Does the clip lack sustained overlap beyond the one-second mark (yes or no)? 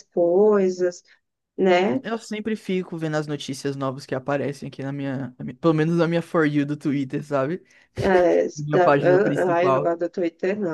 no